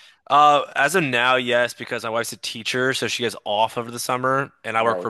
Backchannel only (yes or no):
yes